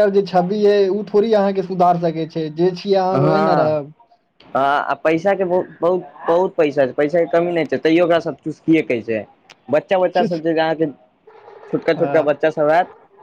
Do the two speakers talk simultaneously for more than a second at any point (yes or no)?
no